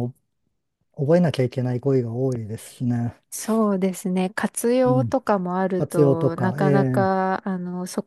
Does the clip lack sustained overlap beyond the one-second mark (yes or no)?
no